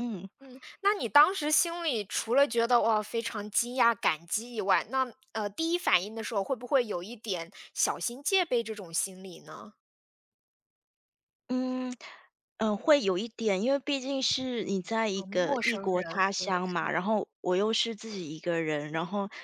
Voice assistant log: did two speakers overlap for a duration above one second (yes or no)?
yes